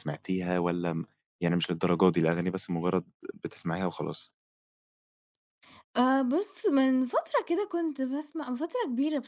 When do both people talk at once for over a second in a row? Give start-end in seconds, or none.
none